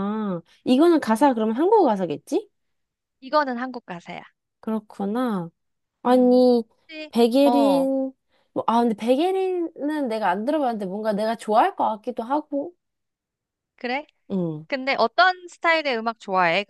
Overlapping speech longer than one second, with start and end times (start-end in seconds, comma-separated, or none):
none